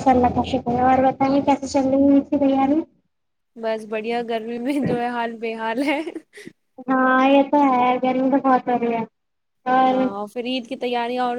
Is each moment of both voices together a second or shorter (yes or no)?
yes